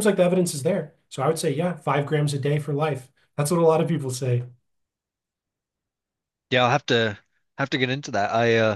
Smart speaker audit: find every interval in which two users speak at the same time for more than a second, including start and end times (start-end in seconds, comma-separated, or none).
none